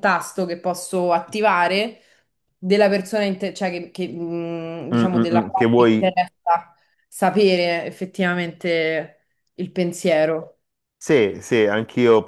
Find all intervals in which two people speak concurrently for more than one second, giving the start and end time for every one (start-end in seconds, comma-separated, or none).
4.9-6.1